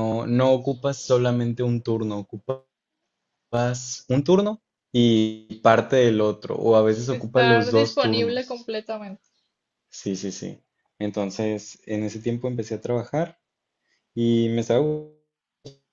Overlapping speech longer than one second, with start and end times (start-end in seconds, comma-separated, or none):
7.1-8.7